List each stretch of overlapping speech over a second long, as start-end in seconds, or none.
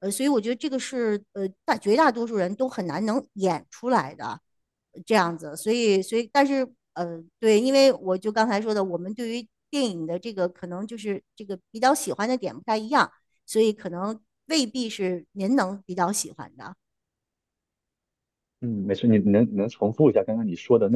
none